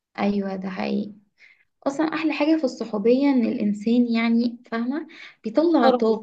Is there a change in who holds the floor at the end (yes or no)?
no